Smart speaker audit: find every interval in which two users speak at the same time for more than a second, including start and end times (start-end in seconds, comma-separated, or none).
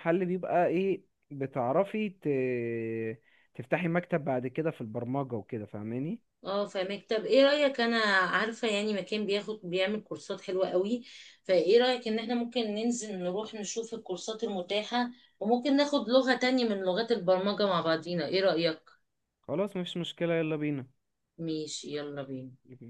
none